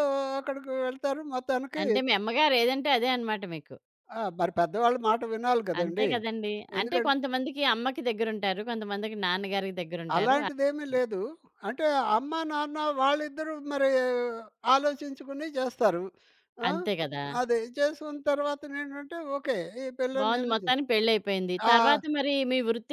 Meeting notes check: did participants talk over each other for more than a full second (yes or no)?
no